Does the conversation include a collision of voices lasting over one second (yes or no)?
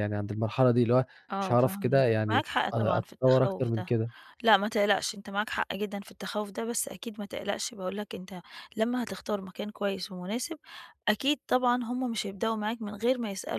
yes